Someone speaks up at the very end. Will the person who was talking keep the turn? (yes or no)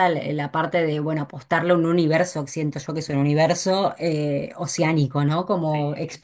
yes